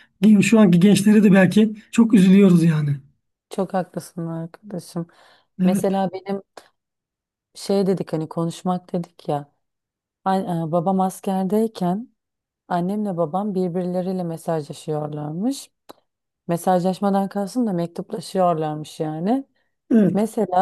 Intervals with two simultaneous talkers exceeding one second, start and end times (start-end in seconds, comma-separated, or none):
none